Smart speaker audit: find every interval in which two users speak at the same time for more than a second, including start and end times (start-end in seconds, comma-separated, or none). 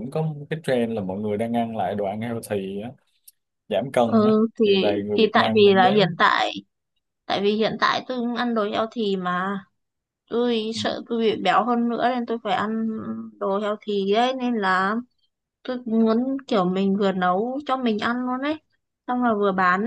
4.0-6.1